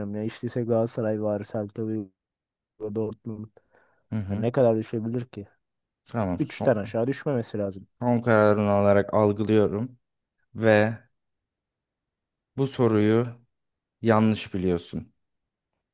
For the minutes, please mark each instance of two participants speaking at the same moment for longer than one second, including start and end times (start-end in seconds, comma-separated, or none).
none